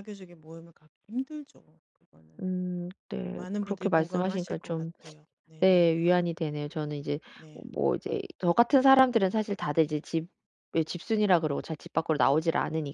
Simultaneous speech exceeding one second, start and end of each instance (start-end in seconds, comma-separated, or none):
3.3-4.9